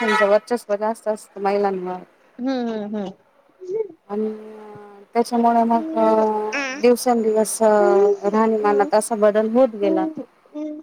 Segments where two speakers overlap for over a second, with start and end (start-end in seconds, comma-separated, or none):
none